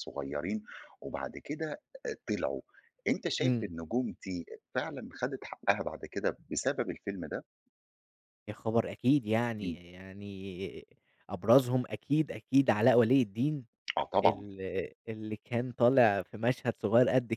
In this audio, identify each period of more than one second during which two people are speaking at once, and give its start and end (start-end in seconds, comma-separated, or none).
none